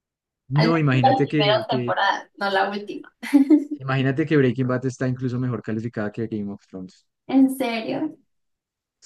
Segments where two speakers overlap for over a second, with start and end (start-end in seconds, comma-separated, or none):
0.5-2.0